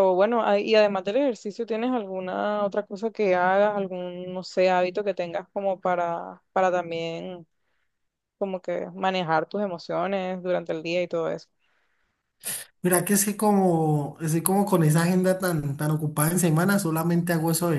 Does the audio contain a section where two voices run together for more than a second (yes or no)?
no